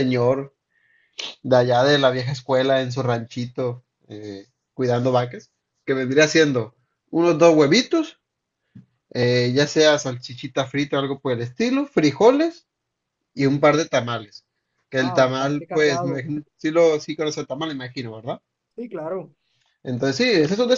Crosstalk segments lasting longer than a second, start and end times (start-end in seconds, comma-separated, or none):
15.0-16.2